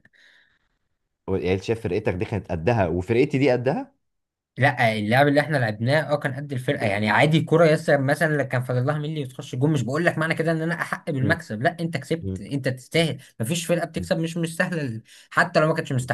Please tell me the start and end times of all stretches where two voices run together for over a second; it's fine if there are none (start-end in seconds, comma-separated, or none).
none